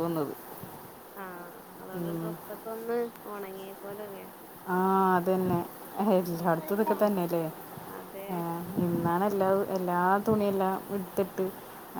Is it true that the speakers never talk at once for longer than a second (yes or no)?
yes